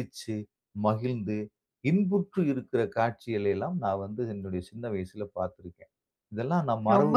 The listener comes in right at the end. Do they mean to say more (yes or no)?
yes